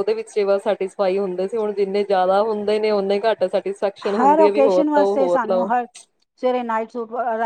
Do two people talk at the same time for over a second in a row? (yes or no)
yes